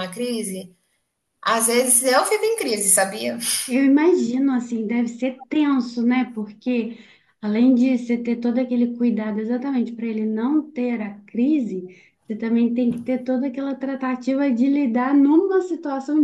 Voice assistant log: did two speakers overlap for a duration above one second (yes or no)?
no